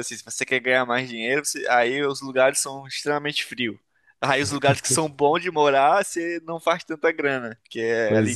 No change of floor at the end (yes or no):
yes